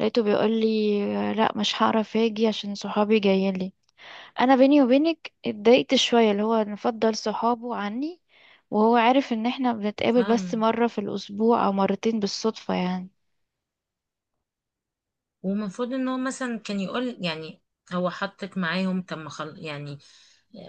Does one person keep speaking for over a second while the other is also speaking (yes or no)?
no